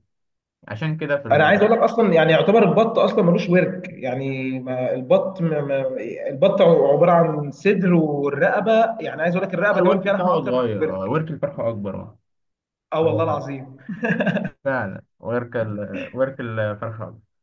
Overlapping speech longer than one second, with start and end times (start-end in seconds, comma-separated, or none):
9.7-11.1